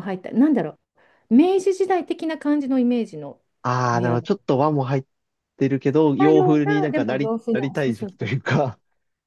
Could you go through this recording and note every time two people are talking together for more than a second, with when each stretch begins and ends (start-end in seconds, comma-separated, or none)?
6.2-8.6